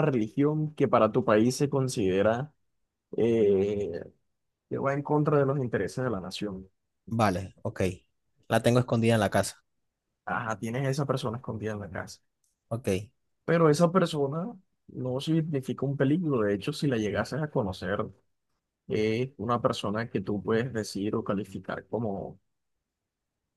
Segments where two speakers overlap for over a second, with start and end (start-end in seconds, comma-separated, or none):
none